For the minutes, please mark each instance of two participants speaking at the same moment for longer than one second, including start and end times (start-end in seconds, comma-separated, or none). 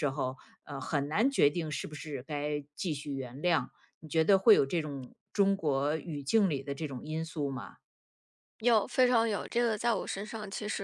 none